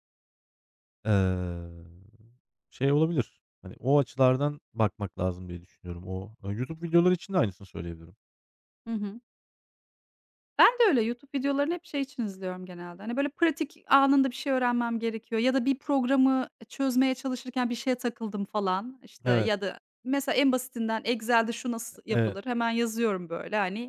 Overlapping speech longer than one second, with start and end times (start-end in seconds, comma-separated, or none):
none